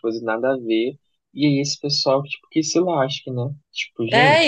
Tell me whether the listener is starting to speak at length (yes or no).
yes